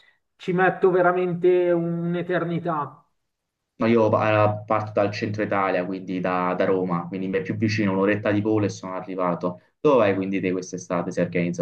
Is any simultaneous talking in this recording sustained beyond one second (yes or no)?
no